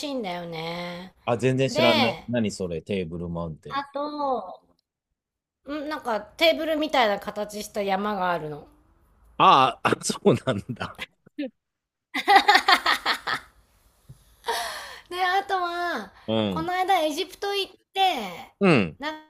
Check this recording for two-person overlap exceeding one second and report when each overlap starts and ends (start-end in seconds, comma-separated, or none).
none